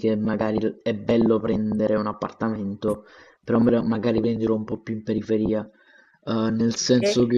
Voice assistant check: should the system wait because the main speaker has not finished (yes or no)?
yes